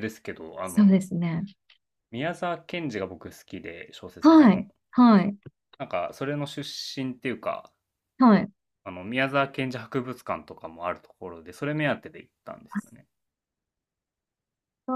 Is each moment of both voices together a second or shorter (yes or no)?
yes